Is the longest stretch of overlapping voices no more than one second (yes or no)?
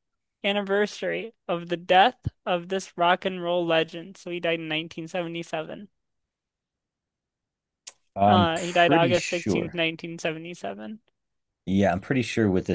no